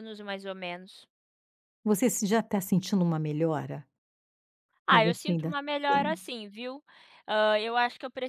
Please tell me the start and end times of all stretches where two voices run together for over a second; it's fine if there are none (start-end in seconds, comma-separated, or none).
4.9-6.2